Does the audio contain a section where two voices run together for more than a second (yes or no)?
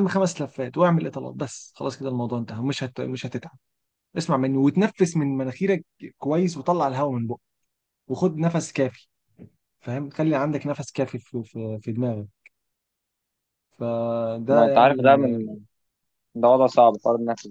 no